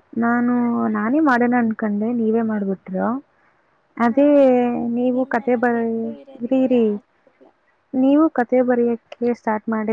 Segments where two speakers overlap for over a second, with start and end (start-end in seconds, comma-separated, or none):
5.1-6.8